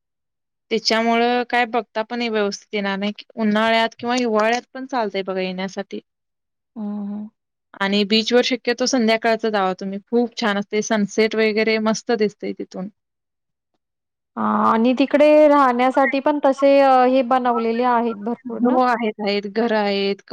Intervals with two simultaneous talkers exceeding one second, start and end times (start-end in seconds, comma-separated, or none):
none